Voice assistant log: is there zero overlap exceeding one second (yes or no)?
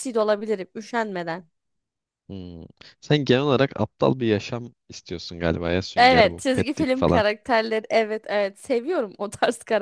no